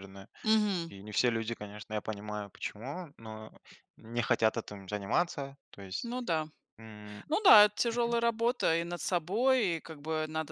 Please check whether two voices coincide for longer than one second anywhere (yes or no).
no